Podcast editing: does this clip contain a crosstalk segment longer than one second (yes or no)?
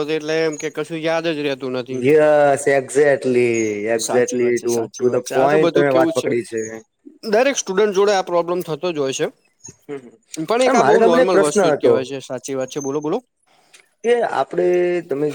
yes